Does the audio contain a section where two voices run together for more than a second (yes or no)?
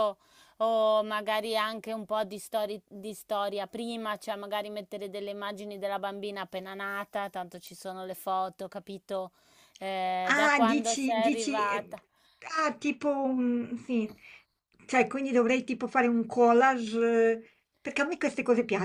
yes